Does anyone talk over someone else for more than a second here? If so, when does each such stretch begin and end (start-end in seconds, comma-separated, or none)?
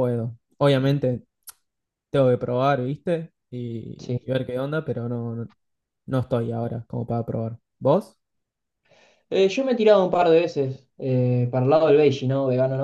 none